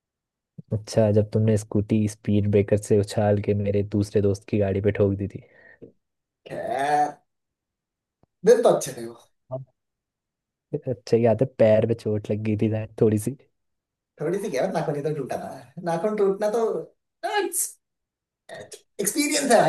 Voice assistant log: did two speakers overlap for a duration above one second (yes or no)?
no